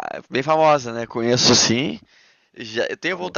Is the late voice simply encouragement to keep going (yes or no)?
yes